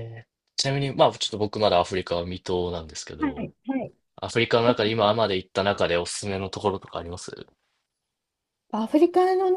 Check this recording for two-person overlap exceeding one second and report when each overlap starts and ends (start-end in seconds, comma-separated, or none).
none